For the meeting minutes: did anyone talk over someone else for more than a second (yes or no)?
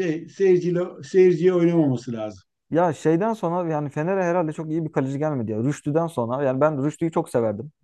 no